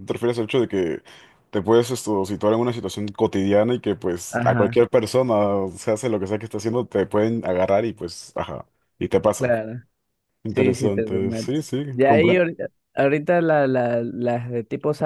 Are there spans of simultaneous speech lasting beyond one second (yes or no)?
yes